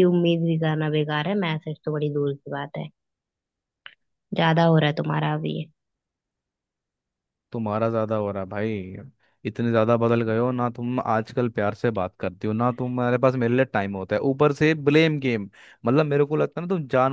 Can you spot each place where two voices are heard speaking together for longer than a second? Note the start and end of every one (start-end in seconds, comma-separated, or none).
none